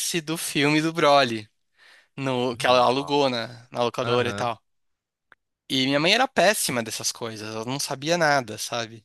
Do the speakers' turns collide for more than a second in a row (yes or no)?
yes